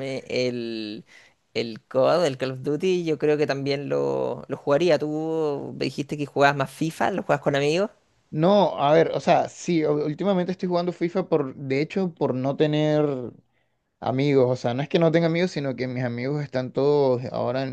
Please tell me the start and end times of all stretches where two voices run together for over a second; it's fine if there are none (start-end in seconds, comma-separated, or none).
none